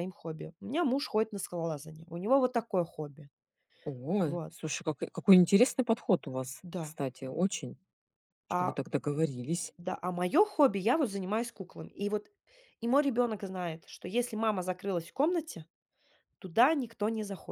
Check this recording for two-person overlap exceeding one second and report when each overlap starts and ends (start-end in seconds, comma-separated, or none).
none